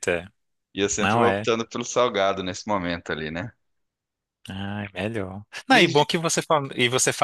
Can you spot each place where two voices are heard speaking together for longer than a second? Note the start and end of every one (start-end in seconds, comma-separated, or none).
none